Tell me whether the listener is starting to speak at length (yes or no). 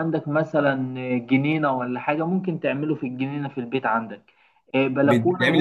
no